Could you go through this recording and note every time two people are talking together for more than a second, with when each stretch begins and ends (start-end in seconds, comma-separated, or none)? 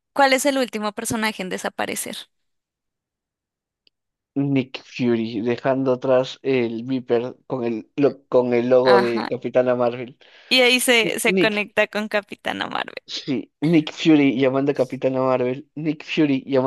none